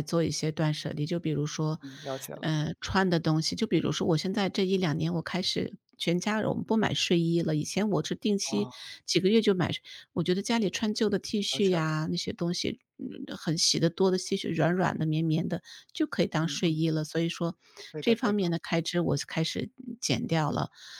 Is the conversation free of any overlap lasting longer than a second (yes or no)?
yes